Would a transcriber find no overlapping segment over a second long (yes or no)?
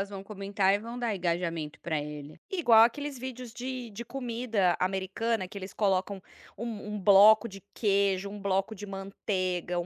yes